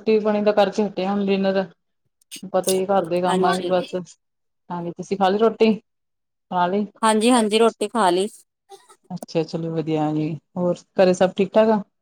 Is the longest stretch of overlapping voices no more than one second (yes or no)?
yes